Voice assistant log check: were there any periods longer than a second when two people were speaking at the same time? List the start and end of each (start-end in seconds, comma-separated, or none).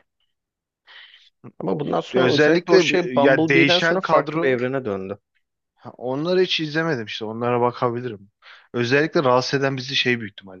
2.1-4.6